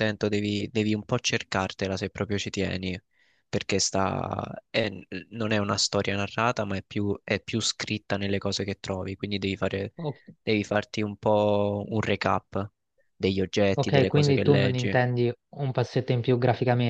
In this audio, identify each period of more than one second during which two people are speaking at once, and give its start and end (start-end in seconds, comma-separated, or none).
13.7-15.0